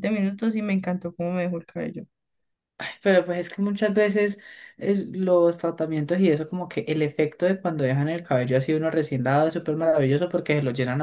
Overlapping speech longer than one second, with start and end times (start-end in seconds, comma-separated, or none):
none